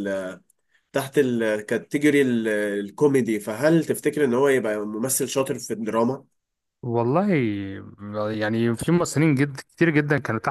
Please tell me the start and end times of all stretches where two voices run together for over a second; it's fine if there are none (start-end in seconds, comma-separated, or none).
none